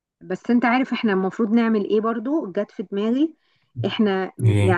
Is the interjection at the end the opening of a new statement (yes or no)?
no